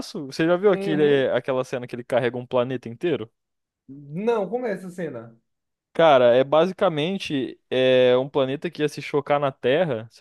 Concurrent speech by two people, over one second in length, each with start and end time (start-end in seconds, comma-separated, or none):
none